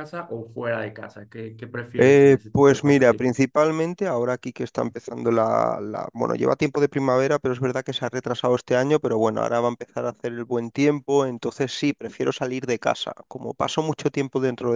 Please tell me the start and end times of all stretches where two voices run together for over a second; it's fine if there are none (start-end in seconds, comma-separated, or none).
2.0-3.5